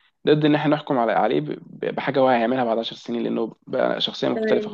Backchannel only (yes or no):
no